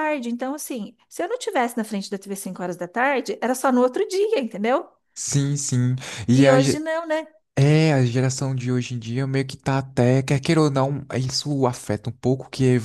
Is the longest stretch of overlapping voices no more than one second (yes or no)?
yes